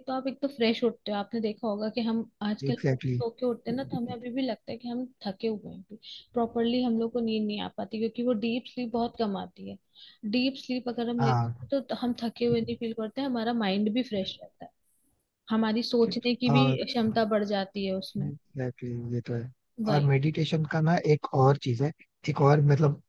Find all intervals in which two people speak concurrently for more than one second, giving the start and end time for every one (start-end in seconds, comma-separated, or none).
2.7-4.2